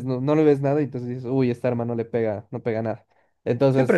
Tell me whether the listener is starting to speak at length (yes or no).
yes